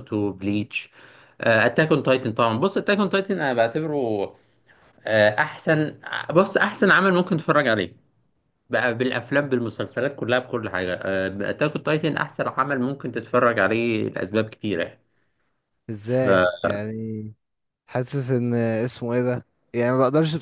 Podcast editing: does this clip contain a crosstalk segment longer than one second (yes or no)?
no